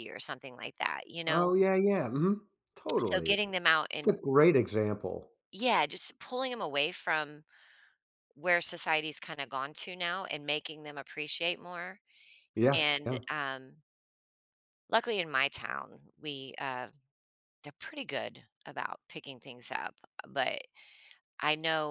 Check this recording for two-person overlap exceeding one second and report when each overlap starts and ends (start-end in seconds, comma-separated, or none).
none